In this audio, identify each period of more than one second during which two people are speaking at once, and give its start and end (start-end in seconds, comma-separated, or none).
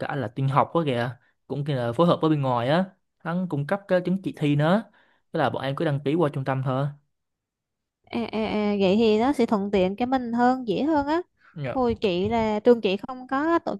none